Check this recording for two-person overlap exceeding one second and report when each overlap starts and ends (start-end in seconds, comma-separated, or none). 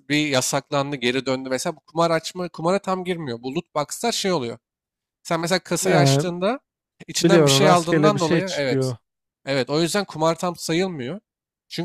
7.2-8.9